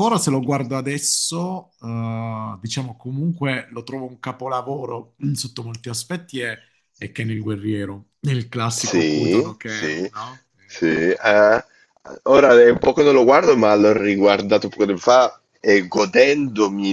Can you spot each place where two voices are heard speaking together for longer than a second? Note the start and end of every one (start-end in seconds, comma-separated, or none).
8.7-10.1